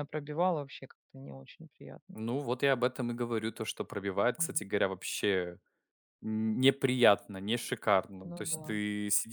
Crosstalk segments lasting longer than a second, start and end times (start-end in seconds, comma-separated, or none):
none